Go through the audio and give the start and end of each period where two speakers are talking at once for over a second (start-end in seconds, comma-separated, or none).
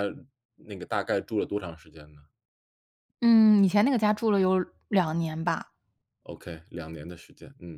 none